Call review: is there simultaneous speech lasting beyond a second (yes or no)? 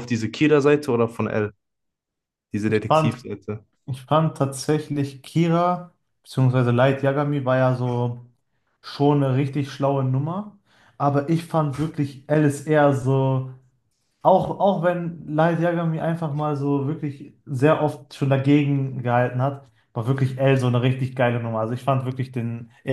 no